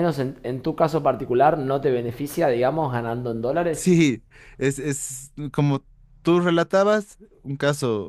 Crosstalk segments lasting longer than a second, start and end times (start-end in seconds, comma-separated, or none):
none